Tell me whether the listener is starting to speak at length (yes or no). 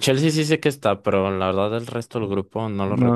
yes